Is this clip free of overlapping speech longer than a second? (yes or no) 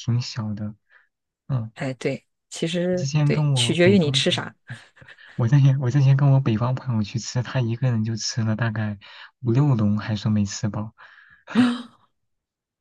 no